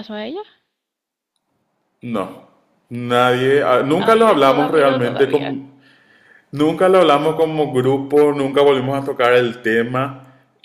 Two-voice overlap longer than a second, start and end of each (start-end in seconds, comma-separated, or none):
4.0-5.5